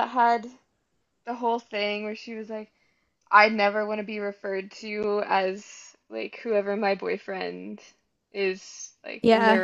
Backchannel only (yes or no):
yes